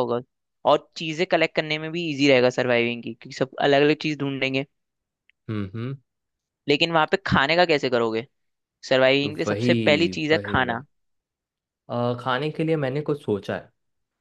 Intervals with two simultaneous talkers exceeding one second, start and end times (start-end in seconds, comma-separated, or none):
9.2-10.8